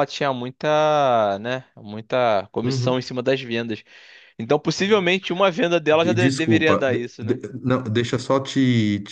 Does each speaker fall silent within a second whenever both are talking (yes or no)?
no